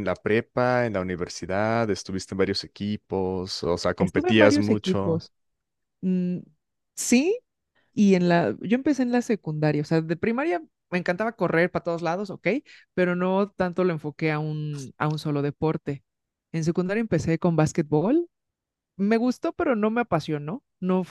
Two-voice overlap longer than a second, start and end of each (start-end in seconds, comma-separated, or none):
4.0-5.2